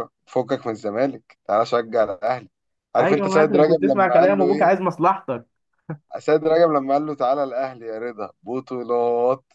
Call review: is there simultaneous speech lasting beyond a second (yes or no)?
yes